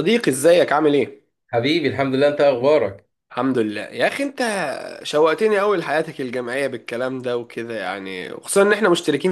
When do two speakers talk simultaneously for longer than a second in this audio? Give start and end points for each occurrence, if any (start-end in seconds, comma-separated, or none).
none